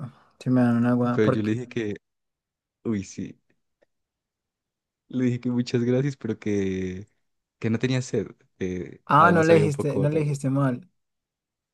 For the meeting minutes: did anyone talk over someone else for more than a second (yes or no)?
yes